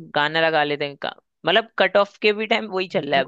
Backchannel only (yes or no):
no